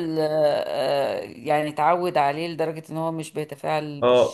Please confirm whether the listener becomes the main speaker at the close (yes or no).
yes